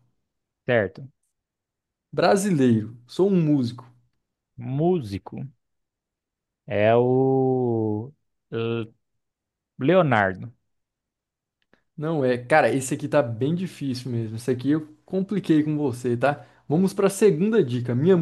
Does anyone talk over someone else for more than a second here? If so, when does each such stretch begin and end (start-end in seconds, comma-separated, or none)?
none